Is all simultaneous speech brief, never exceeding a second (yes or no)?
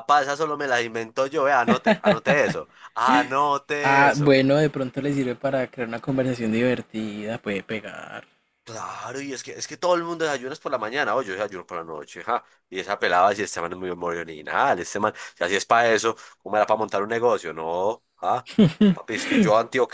yes